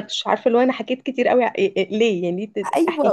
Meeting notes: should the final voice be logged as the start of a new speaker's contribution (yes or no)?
yes